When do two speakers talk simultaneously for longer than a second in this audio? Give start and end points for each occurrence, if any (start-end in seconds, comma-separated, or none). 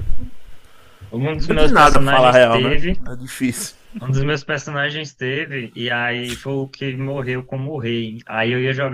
1.4-3.0